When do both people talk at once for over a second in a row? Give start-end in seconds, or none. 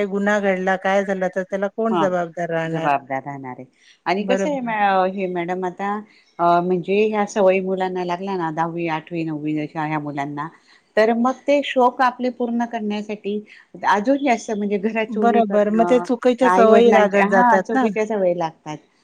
16.5-17.9